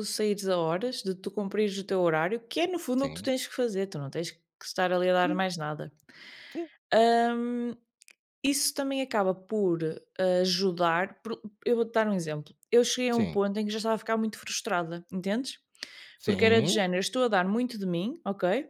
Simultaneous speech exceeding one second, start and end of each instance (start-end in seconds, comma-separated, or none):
none